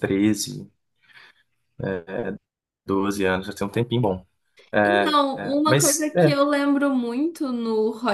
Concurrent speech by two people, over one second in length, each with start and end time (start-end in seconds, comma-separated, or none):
4.8-6.3